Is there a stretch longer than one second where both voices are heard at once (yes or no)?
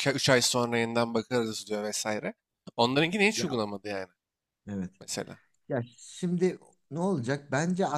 no